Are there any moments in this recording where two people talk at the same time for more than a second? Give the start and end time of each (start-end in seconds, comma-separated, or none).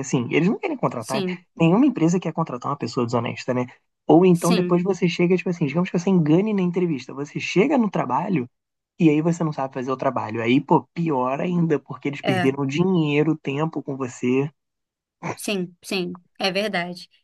none